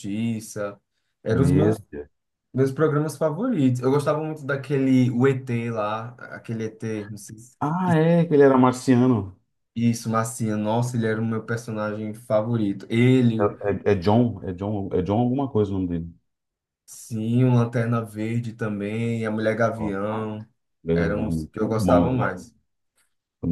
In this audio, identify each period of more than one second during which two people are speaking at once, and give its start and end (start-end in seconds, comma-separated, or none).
20.9-22.4